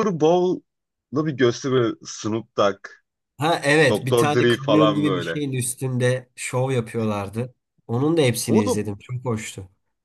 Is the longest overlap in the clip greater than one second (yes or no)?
yes